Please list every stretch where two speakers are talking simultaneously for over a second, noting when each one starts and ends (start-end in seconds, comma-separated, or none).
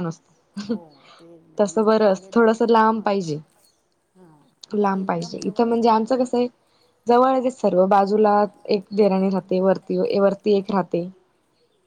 1.6-3.3, 4.7-6.3